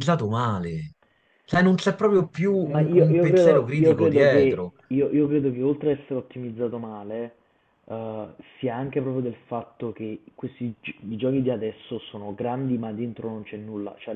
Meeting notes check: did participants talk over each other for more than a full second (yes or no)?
yes